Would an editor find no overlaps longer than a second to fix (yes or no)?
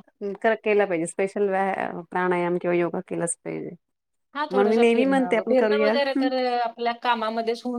no